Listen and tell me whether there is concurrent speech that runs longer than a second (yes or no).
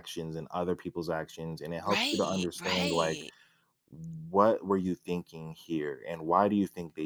yes